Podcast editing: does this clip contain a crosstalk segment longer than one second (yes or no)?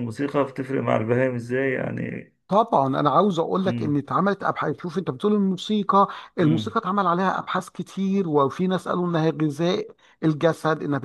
no